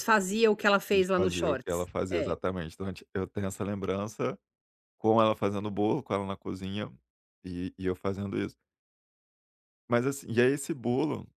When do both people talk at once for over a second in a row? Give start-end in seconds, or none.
0.9-2.4